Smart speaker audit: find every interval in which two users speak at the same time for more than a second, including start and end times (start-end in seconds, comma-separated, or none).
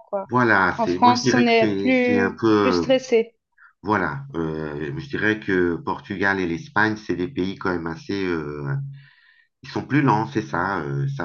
0.8-2.8